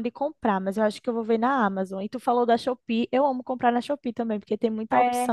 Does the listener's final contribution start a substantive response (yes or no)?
yes